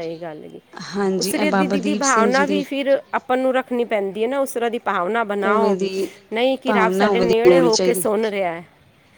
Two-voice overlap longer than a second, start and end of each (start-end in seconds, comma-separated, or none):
1.2-2.6, 6.7-8.0